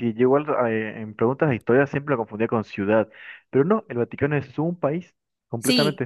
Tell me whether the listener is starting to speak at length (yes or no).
yes